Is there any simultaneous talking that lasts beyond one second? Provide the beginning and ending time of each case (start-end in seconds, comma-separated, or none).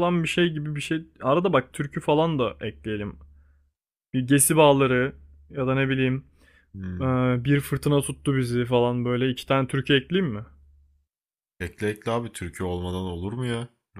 none